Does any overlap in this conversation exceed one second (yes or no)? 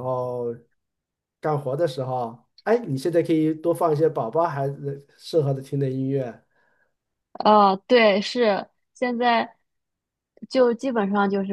no